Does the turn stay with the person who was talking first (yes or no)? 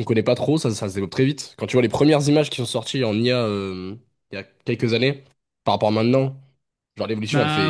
no